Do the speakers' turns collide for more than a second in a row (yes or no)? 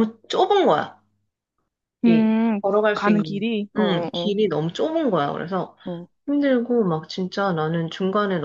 yes